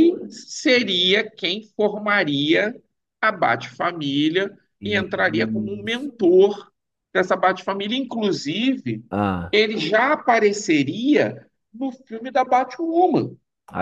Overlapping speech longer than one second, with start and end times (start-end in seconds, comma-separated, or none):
4.8-6.1